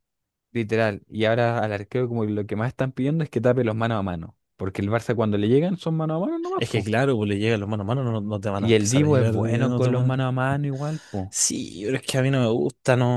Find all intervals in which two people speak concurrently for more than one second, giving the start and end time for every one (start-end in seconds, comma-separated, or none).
8.6-10.3